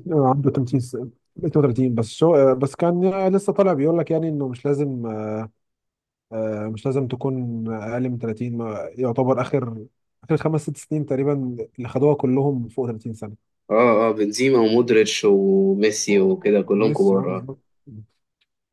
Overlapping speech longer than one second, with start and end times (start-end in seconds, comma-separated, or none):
16.1-17.5